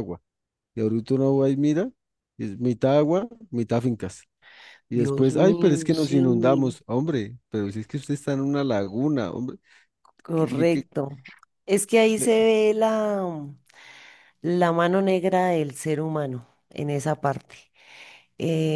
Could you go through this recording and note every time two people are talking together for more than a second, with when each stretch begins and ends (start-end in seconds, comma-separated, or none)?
4.9-6.2